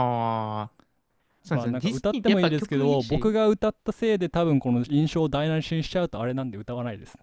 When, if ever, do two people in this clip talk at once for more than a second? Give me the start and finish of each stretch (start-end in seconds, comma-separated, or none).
1.5-3.4